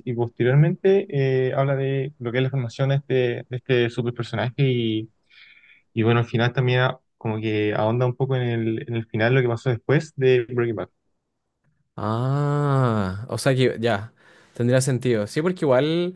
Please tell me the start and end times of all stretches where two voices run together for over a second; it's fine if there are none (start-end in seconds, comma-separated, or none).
none